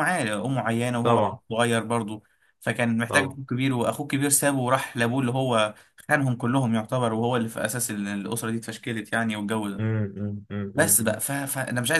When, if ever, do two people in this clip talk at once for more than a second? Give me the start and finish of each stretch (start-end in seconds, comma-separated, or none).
none